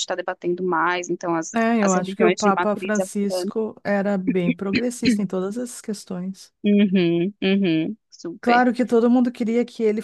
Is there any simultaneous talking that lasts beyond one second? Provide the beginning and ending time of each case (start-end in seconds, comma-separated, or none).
1.6-3.5